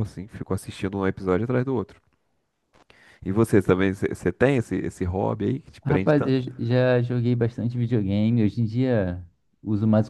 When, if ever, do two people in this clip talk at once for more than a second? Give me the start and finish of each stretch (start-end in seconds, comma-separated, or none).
none